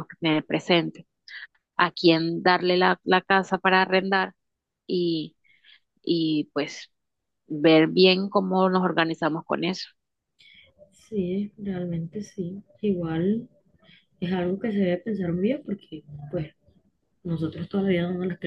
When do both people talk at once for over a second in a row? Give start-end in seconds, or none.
none